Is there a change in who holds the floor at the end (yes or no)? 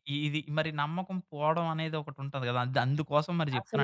yes